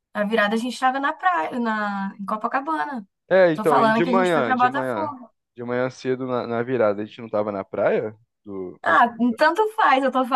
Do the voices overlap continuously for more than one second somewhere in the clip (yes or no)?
yes